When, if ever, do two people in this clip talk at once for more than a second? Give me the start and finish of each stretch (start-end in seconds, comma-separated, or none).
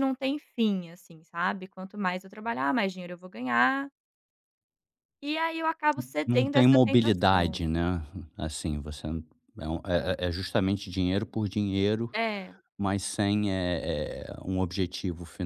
6.2-7.6